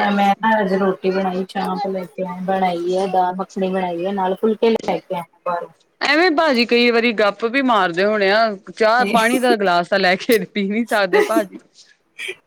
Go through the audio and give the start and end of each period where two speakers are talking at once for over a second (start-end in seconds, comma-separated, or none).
none